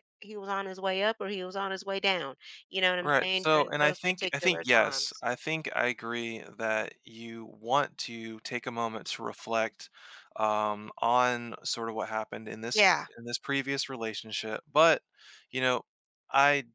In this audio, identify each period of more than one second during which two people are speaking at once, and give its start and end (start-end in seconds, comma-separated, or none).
3.0-5.2